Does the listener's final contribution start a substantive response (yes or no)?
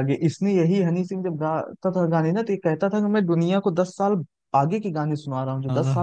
no